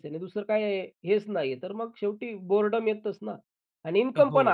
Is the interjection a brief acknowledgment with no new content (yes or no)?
yes